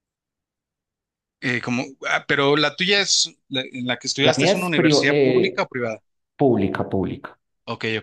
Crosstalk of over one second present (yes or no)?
yes